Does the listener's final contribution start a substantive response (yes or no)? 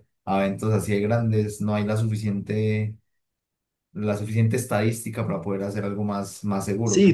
yes